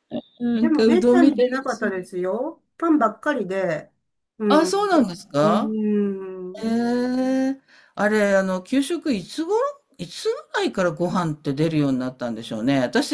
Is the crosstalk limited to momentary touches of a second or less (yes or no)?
no